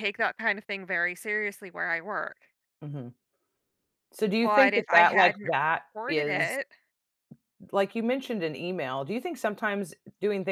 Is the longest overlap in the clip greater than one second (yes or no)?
yes